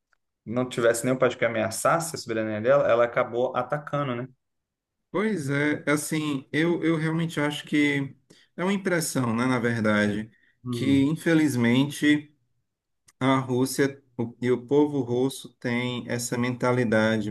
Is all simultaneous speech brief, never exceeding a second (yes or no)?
yes